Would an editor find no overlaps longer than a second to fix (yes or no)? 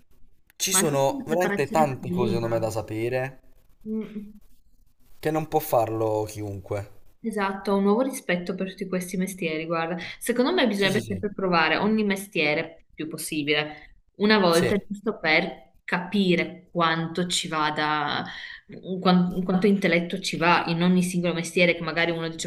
no